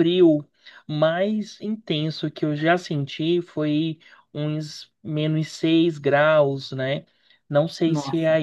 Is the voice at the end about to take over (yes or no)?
no